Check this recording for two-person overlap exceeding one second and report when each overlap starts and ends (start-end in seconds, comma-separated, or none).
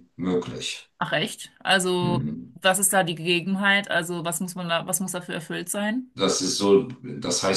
none